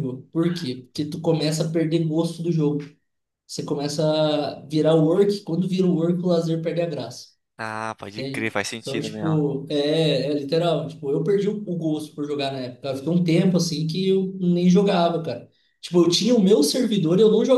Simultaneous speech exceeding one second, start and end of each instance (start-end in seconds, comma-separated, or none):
8.1-9.4